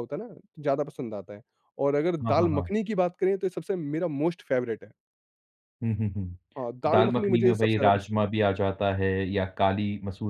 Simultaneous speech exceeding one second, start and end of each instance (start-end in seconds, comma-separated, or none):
6.8-8.3